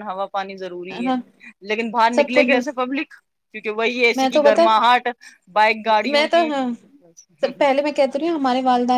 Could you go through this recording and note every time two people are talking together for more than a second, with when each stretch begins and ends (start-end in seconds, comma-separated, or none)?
none